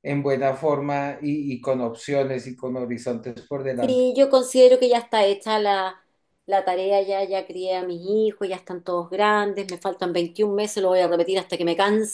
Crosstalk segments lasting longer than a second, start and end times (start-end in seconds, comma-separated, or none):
none